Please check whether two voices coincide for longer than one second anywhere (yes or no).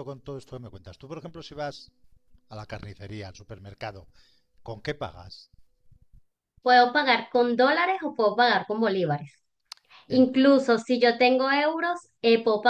no